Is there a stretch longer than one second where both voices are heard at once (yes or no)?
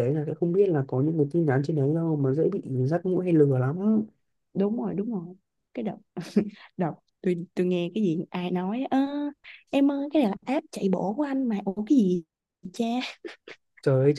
no